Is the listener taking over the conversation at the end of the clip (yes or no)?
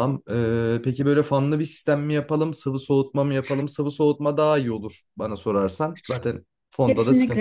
yes